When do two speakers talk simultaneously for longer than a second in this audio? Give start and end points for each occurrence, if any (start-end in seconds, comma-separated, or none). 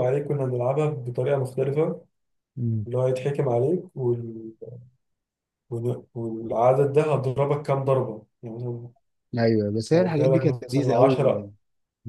9.9-11.5